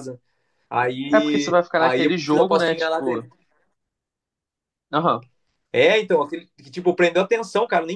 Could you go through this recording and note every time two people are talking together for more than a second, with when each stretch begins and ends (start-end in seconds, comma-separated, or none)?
1.1-3.0